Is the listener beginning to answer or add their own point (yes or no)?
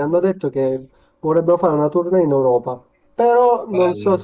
no